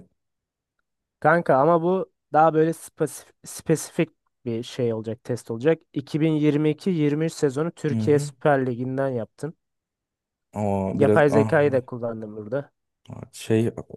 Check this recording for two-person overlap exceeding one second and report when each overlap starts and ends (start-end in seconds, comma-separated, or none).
none